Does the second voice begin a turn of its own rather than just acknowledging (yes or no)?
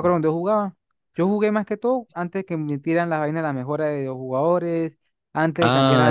no